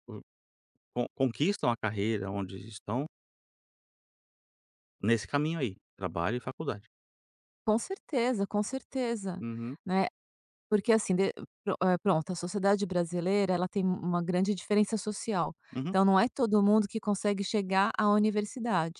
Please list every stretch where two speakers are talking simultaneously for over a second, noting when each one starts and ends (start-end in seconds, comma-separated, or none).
none